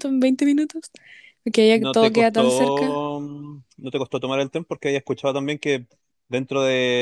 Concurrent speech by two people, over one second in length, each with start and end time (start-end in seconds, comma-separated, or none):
1.7-3.0